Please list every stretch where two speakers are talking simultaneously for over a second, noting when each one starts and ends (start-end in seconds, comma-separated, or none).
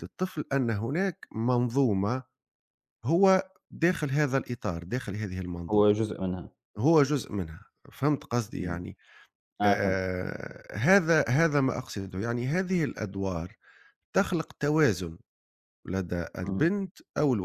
none